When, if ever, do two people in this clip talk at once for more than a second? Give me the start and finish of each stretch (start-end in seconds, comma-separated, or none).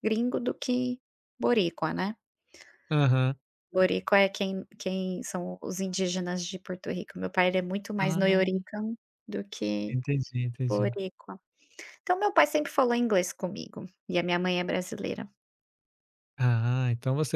none